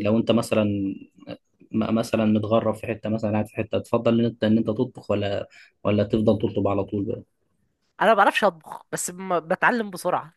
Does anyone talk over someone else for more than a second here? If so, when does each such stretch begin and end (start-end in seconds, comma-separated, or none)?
none